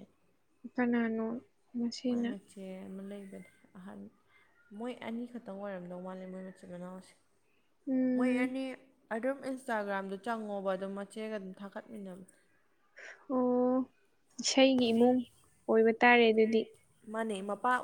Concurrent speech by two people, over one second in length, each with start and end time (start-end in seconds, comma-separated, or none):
none